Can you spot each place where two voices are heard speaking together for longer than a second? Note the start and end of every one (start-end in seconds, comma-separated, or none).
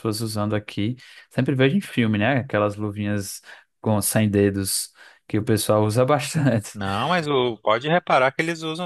none